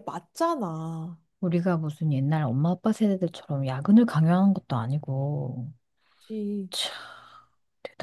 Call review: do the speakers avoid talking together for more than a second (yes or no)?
yes